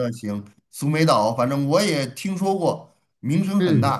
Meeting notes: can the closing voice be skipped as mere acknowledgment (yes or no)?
no